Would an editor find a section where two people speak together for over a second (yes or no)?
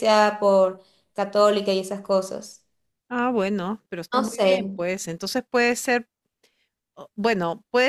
no